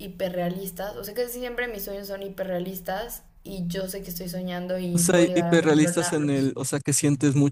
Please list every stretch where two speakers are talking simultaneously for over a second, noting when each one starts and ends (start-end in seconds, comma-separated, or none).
4.9-6.5